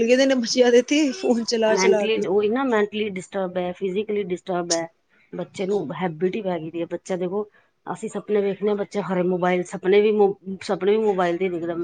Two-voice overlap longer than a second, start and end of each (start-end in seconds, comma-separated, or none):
none